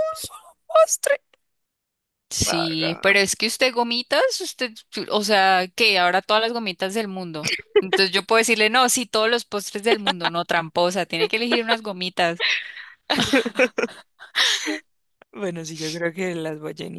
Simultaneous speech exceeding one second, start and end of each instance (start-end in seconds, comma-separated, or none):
none